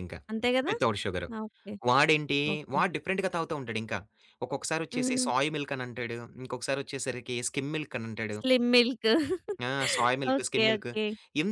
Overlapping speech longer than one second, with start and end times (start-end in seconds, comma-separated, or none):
none